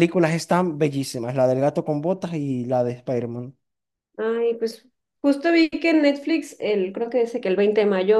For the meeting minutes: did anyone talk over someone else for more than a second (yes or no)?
no